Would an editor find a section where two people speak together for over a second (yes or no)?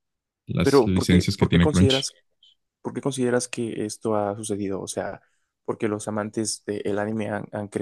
yes